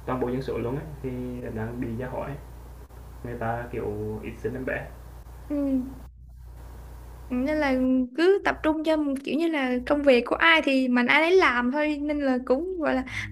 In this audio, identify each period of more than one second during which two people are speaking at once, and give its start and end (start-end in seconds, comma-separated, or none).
none